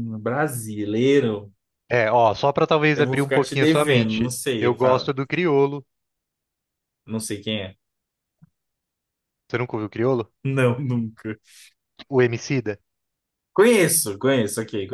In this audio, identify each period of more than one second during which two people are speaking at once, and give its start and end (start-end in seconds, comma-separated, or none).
2.9-4.8